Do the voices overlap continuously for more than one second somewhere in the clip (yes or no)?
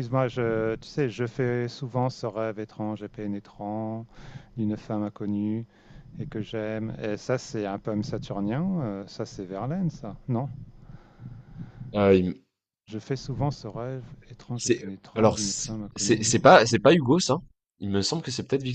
yes